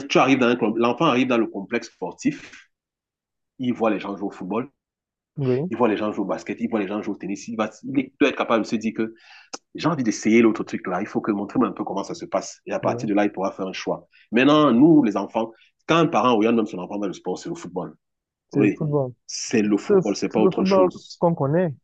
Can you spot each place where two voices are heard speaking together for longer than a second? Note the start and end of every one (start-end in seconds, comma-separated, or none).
19.9-21.2